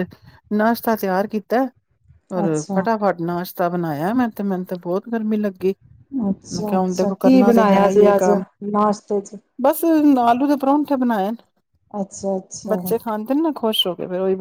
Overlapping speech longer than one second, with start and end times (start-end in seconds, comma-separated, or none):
6.5-8.3